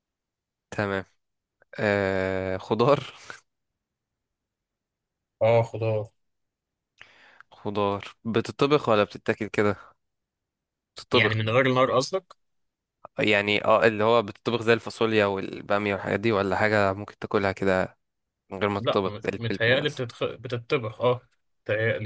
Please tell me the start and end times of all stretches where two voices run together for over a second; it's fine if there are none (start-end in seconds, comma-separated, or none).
18.8-20.0